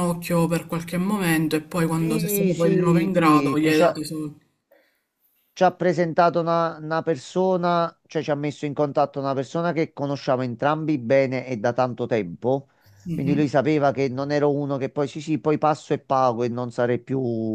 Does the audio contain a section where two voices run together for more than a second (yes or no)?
yes